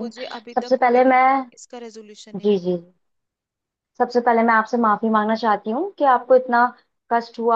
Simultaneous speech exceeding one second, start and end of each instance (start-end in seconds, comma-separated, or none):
none